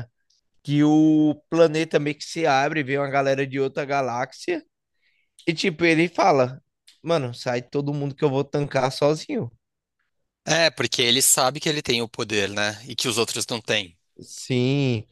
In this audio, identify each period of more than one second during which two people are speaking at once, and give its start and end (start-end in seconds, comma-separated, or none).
none